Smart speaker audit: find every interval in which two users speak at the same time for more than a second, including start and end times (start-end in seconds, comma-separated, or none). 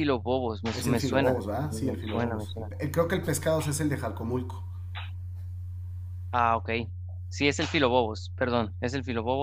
0.7-2.7